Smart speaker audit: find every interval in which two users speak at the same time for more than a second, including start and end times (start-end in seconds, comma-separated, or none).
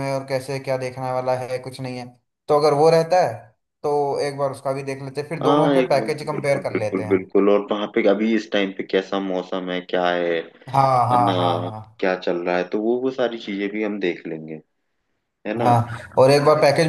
5.4-7.3